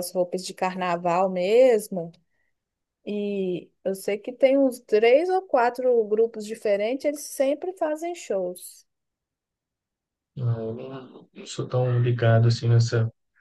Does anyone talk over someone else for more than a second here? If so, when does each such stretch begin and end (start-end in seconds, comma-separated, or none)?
none